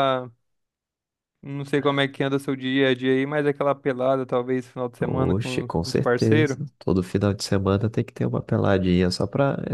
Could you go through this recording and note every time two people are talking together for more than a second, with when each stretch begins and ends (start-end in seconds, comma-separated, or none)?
5.0-6.6